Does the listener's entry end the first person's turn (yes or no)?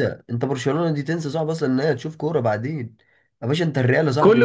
yes